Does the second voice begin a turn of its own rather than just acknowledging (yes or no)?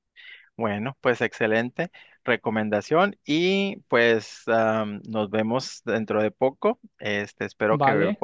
no